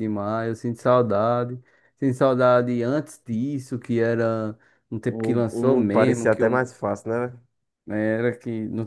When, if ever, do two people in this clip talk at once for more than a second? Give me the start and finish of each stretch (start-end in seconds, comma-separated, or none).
5.0-6.7